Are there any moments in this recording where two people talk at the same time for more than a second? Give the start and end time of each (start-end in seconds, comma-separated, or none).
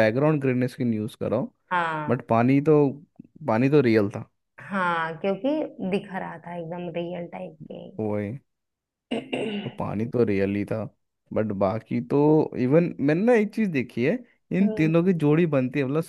none